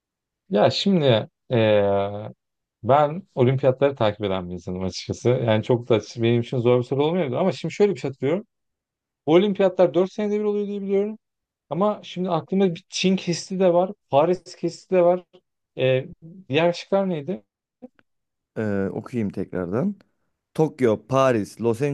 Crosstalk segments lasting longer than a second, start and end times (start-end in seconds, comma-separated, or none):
none